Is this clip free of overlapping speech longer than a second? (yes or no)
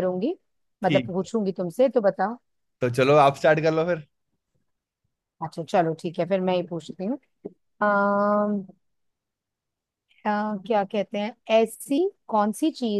yes